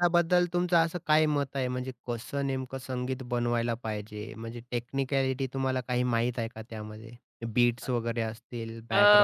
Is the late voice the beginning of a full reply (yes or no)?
yes